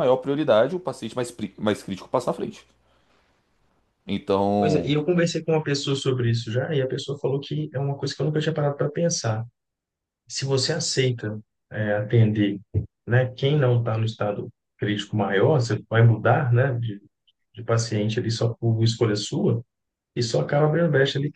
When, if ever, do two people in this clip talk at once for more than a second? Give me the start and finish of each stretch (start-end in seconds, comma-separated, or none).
none